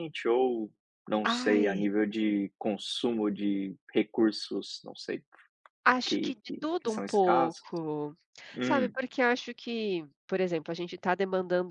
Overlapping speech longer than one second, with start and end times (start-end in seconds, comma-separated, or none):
6.0-7.6